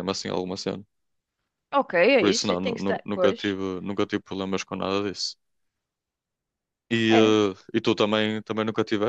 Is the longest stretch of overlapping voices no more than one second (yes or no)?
no